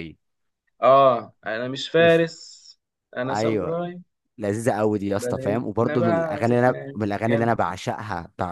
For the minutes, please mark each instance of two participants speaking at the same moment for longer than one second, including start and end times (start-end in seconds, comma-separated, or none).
5.2-7.5